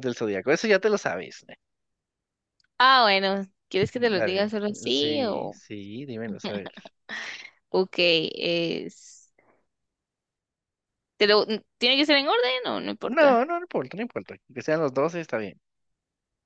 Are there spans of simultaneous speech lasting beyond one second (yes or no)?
yes